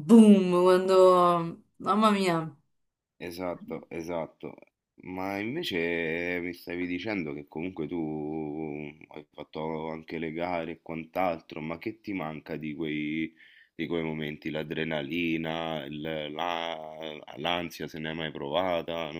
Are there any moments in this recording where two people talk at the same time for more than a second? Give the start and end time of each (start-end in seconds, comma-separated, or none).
none